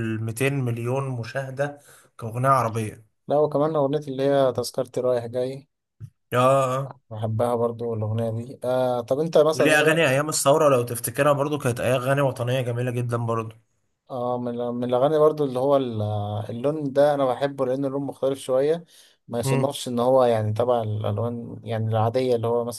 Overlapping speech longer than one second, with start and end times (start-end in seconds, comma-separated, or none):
none